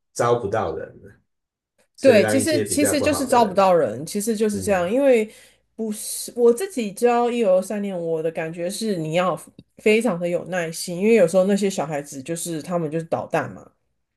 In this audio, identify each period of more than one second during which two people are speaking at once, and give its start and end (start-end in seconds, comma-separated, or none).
2.0-3.6